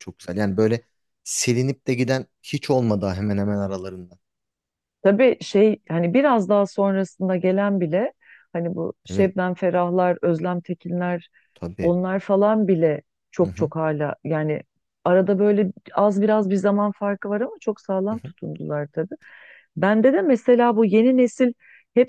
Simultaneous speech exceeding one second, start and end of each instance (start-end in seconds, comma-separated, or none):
none